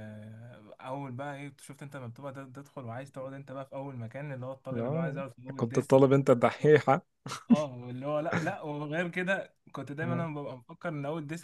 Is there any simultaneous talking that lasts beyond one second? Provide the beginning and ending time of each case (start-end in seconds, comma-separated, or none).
4.7-6.1